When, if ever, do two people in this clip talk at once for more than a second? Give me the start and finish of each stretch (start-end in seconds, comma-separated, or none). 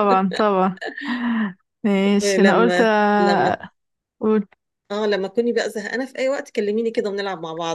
2.2-3.6